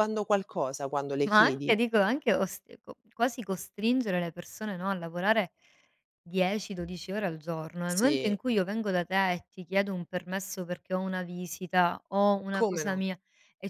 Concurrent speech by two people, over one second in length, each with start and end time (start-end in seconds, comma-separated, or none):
none